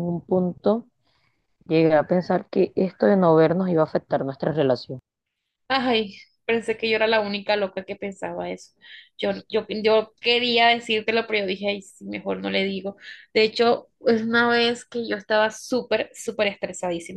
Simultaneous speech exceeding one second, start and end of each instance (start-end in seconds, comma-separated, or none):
none